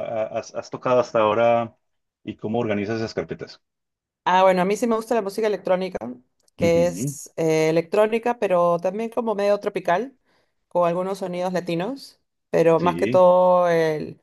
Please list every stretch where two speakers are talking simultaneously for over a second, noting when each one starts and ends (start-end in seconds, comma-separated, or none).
none